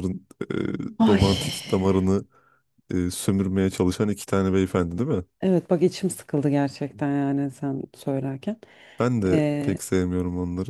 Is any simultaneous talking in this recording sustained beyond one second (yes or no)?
no